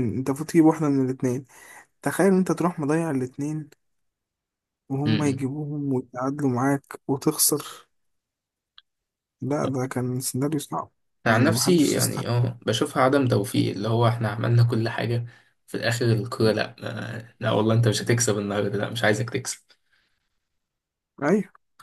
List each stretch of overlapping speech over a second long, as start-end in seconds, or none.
11.3-12.5